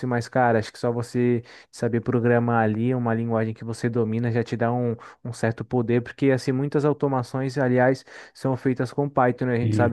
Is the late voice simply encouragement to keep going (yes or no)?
yes